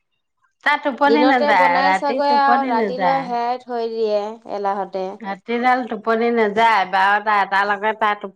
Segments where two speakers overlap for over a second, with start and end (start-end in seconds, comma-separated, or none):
1.3-3.2